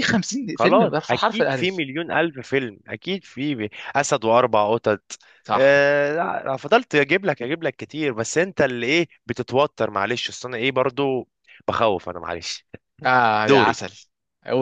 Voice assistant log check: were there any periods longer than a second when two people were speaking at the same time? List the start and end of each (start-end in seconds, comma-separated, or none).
0.6-1.8